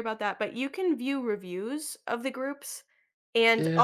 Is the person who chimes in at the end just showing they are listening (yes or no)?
yes